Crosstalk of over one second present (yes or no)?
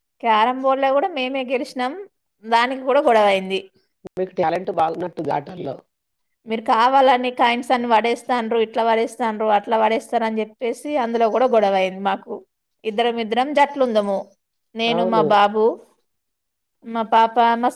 no